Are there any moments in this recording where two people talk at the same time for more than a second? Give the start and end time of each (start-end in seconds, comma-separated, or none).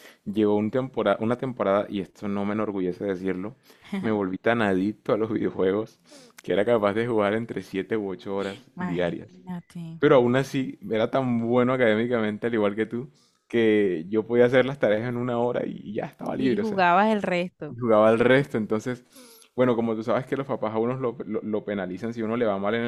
none